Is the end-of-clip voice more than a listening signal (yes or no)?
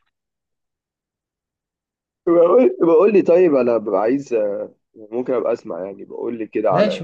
yes